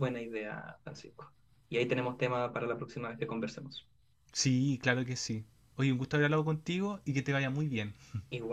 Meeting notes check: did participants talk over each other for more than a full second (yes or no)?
no